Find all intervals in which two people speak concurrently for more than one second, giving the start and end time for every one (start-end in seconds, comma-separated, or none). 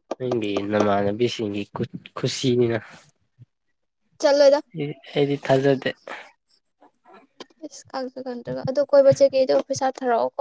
none